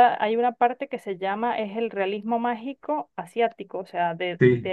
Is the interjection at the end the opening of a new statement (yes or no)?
no